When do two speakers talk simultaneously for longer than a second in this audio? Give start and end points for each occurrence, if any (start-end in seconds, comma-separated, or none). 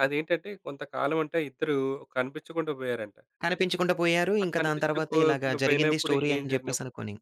4.4-6.7